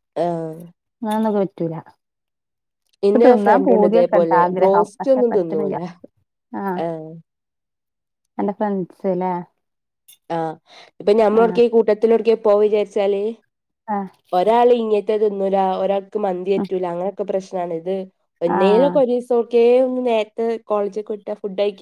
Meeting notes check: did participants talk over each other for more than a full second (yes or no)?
yes